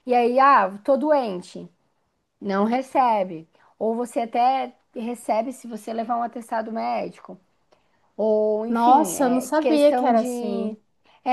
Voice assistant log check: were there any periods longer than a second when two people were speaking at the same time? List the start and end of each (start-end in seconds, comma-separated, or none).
8.7-10.8